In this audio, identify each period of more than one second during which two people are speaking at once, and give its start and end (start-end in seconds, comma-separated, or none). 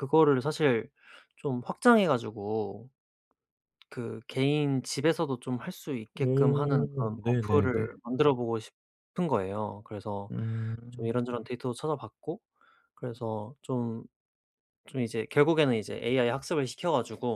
6.1-7.9